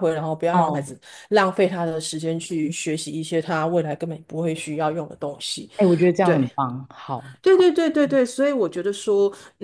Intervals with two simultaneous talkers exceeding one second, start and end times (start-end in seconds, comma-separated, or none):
none